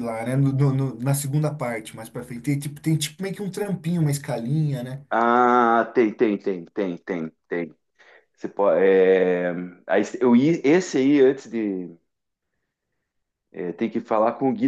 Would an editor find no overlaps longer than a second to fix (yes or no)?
yes